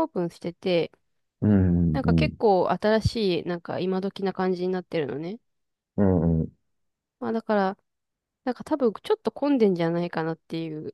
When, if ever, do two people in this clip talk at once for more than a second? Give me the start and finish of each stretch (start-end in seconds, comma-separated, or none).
none